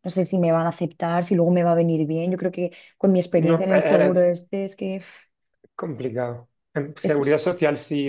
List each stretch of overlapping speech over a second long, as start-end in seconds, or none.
none